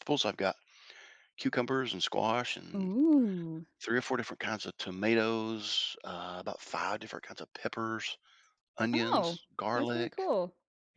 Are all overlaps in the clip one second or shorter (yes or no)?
no